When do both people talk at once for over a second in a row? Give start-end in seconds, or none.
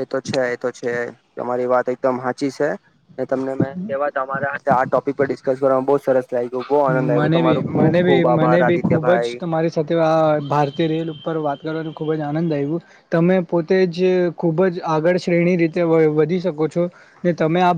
7.2-9.4